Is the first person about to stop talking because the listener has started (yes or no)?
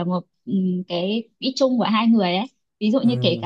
no